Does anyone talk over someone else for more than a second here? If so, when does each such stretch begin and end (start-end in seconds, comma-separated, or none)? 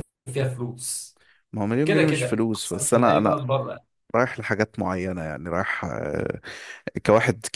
1.9-3.4